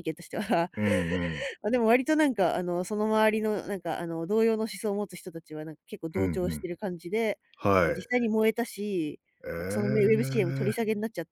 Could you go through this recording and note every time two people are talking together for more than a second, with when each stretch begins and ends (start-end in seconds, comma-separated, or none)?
9.6-10.8